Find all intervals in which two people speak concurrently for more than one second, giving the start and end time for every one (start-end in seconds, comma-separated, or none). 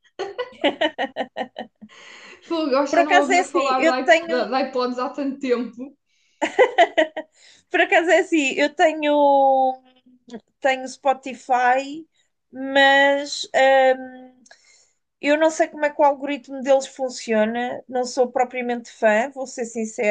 2.9-4.5